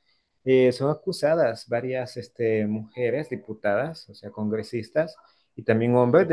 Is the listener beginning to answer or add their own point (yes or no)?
no